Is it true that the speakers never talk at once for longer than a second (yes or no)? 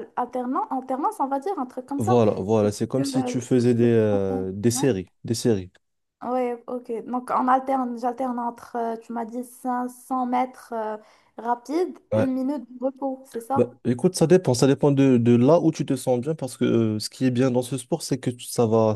no